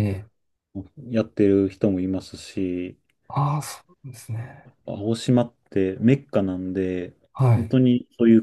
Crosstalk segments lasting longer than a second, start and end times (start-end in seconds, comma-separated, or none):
none